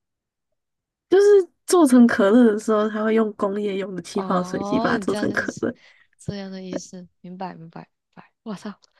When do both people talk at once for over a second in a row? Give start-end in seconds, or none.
4.1-5.6